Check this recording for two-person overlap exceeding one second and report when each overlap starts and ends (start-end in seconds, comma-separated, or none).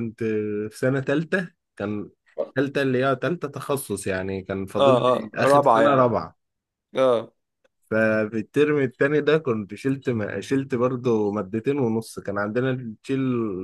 4.8-6.1